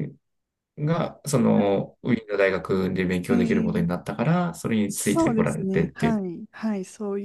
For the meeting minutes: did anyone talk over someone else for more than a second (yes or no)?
yes